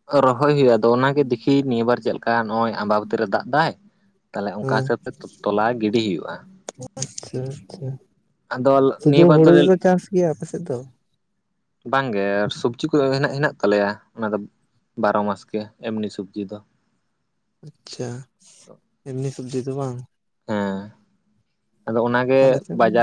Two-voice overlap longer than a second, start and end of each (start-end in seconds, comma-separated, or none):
none